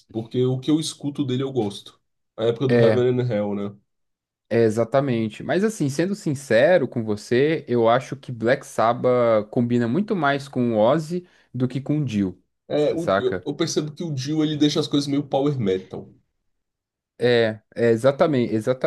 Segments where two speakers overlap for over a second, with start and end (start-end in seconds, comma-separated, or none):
none